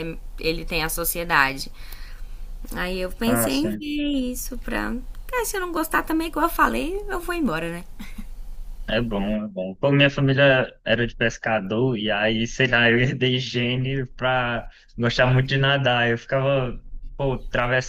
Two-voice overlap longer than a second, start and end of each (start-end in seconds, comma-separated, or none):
none